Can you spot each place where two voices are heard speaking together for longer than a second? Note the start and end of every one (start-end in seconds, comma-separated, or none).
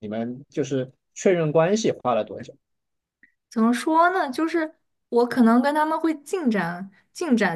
none